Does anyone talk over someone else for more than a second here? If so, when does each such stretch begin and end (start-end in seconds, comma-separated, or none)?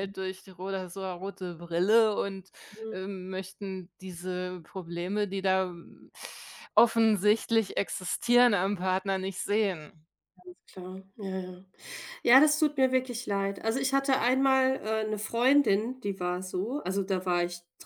none